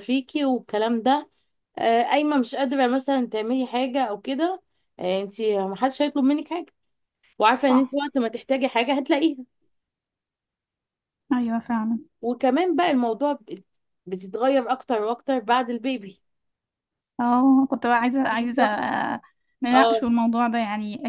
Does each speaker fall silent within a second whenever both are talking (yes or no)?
yes